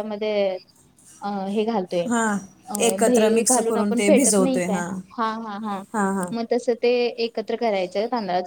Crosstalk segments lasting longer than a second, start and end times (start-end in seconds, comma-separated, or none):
2.9-4.8